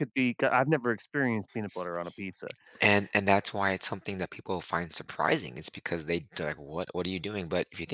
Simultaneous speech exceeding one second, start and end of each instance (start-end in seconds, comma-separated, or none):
none